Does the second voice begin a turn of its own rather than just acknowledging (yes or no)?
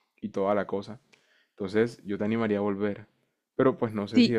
no